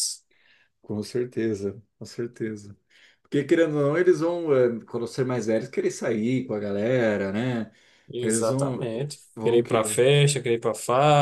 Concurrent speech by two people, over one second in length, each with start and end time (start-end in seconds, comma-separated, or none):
8.2-10.0